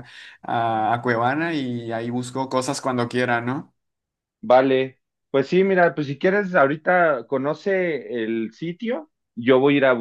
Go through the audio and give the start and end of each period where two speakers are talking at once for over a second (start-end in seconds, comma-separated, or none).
none